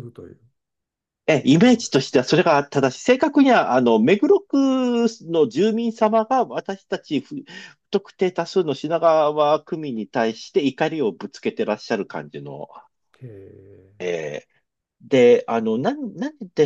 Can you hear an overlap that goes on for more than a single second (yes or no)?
no